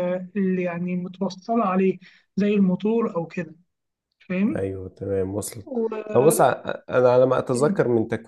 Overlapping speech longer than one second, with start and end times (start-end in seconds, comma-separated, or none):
none